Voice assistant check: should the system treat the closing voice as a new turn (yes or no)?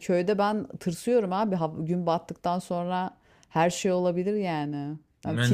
yes